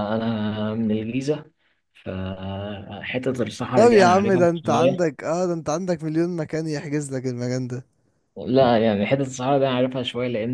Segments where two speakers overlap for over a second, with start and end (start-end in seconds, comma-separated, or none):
3.8-5.0